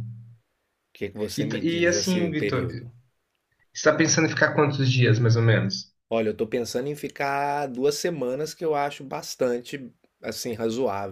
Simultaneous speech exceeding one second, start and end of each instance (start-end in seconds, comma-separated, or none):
1.4-2.7